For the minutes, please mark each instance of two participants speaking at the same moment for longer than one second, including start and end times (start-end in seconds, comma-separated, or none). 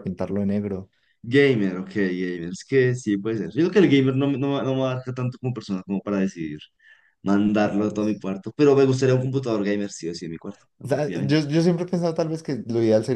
none